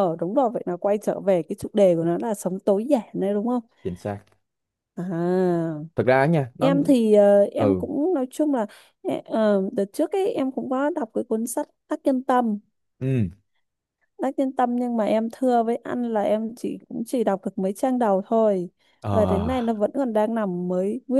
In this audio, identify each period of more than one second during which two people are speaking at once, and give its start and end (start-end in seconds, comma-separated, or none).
none